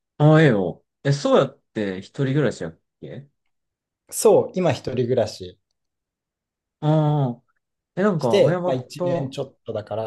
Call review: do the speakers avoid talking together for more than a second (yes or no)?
no